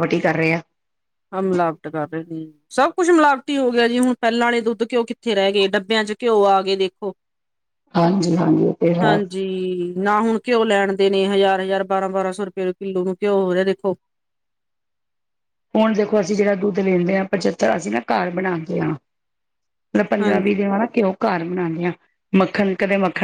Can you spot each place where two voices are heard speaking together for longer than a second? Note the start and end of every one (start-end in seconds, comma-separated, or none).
none